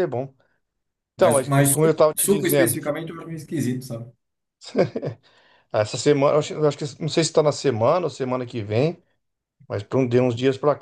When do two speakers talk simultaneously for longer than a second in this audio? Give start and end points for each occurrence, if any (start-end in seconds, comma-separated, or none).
1.2-2.8